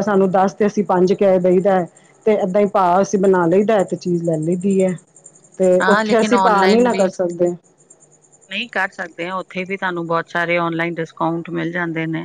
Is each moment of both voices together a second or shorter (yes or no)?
no